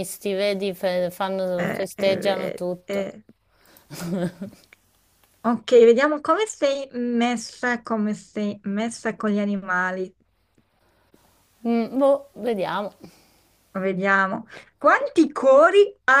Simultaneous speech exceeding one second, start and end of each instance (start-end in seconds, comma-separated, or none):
1.6-3.1